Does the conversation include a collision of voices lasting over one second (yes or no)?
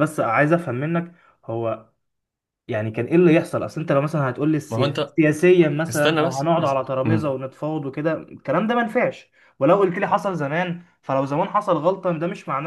yes